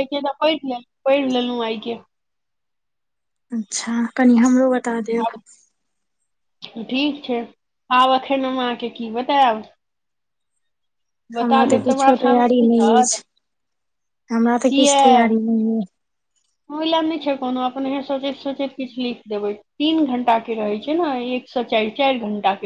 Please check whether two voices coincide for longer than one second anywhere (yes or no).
yes